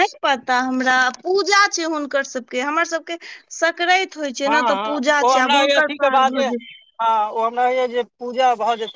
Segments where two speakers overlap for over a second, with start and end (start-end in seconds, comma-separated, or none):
4.7-6.5